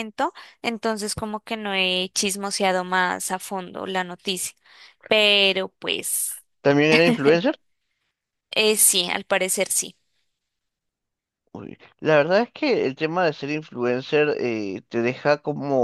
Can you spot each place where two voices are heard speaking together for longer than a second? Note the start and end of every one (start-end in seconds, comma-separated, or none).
none